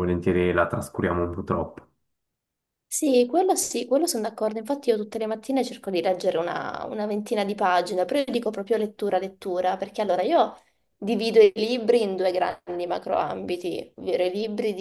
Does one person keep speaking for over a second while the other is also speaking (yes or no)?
no